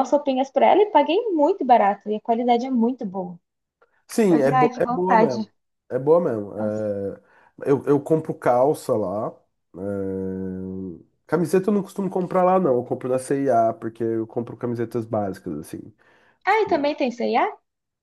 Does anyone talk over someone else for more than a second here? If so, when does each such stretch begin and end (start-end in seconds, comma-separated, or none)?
4.3-5.5